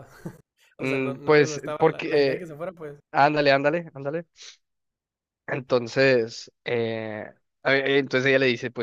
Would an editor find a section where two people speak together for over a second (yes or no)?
yes